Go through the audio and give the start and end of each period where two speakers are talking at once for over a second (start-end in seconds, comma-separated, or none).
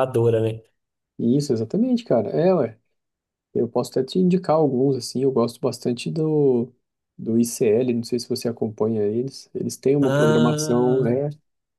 10.0-11.2